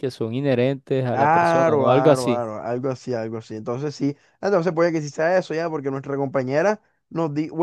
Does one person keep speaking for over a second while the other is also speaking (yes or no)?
yes